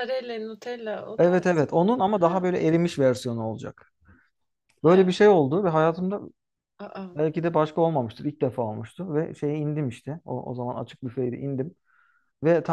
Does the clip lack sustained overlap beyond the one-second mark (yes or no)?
no